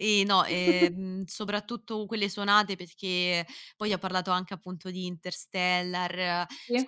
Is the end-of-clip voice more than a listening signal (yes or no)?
no